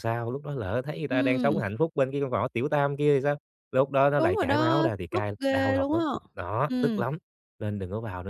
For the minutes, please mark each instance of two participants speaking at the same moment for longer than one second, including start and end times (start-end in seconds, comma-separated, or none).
4.2-6.0